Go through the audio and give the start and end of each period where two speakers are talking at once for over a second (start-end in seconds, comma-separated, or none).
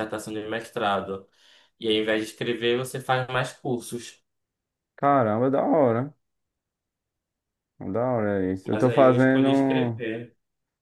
8.7-10.0